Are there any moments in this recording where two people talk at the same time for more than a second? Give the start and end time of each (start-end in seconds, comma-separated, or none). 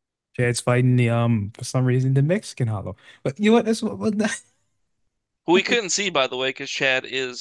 none